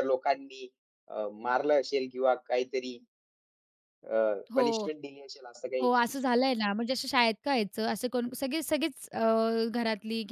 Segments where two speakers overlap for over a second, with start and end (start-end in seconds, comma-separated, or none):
none